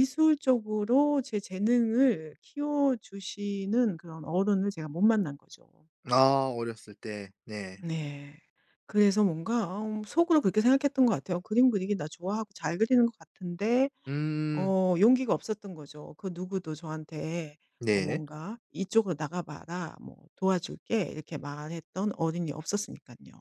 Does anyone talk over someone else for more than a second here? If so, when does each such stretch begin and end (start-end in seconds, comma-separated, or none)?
none